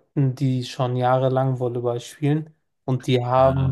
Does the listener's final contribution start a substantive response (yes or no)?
no